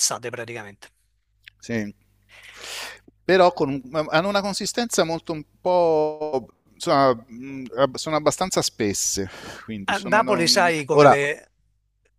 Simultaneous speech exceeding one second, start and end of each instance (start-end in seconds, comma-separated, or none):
9.9-11.2